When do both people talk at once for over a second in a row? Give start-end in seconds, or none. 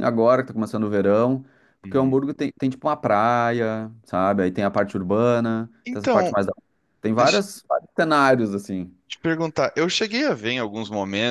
none